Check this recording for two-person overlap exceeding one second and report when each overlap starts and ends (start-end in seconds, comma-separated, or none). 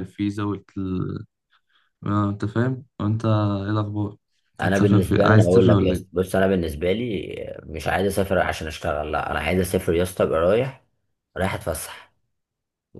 4.6-6.1